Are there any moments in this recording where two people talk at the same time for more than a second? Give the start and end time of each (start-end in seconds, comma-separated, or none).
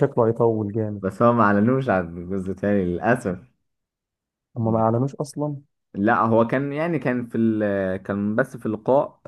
none